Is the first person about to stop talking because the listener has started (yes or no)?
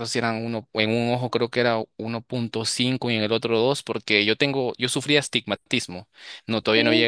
no